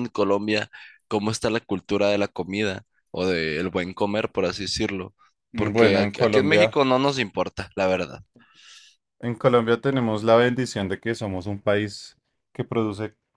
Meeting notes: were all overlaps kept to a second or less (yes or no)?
no